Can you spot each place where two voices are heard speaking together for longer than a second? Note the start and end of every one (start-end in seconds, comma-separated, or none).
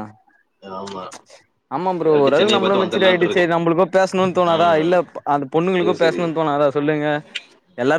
2.0-3.5